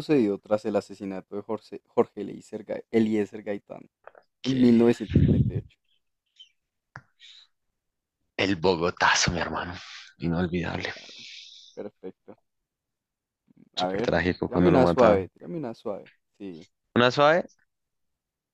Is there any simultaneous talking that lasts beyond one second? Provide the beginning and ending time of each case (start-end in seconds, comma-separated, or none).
13.8-15.3